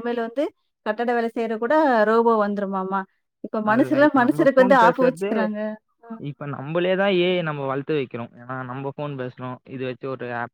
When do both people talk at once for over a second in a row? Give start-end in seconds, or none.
3.7-5.3